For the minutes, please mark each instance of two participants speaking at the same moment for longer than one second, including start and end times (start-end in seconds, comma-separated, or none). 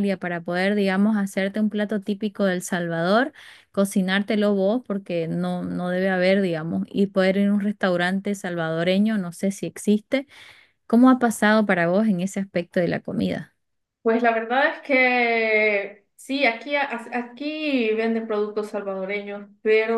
none